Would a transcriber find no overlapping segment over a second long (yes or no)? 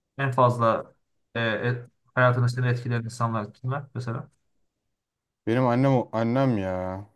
yes